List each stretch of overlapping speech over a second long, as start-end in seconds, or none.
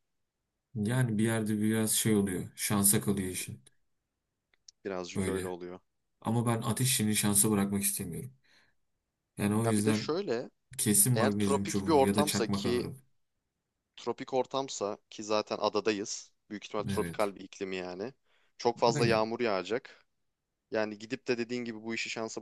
11.1-12.9